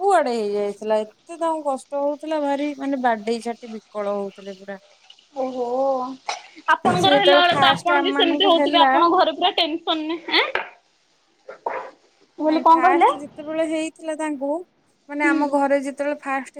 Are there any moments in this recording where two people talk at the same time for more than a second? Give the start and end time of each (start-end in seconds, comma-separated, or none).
7.0-8.9